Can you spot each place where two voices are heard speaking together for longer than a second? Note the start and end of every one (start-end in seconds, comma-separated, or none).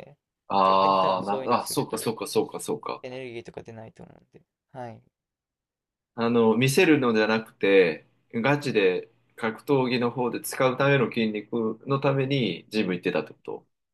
0.6-2.1